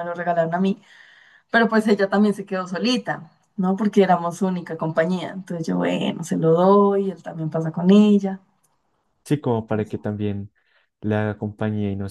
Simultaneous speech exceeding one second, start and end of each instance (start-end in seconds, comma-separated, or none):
none